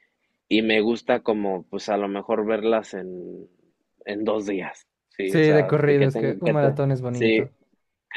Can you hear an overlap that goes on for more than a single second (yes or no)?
yes